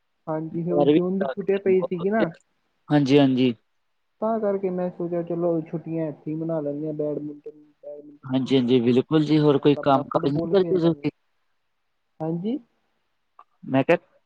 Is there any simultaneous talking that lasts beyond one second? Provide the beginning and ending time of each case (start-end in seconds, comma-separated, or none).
8.3-11.1